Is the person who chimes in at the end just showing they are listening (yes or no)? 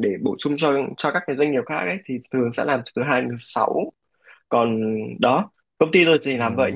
yes